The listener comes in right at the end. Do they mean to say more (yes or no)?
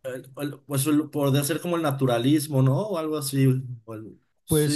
yes